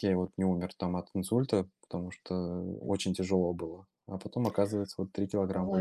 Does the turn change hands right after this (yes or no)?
yes